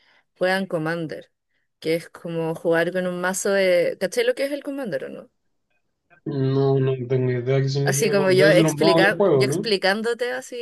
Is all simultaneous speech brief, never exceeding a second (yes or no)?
no